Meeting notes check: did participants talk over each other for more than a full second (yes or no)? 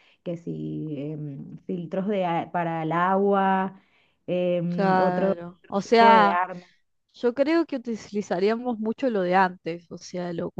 yes